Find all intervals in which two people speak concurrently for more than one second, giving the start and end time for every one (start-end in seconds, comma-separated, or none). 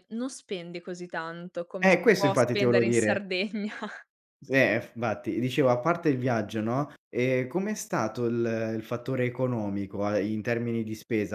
1.8-3.2